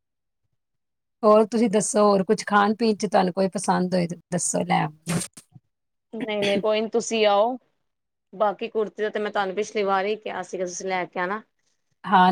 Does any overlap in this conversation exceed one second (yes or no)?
no